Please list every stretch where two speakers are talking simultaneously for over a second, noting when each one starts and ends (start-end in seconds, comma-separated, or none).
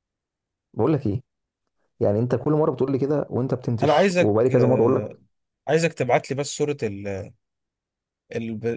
3.8-5.2